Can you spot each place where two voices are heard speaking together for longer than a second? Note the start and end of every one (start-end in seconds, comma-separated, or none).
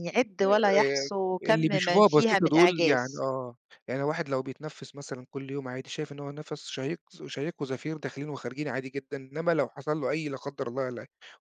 0.8-3.2